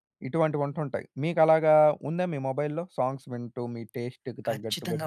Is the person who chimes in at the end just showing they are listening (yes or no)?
no